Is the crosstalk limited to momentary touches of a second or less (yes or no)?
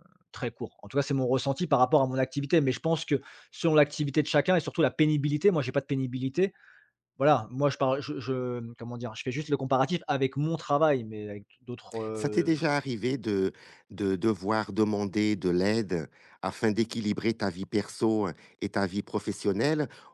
yes